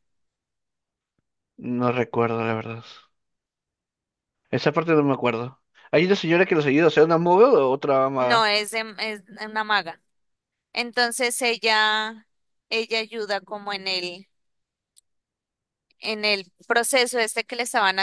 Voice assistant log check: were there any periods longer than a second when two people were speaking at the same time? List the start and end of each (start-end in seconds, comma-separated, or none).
none